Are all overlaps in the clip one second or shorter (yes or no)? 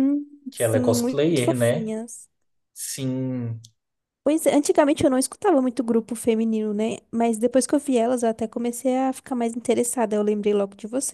no